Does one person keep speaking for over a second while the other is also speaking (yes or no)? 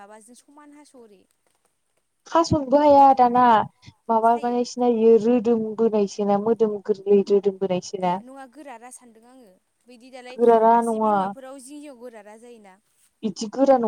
no